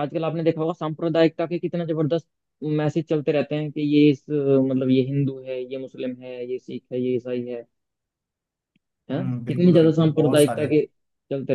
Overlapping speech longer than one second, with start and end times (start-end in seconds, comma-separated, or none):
9.1-10.7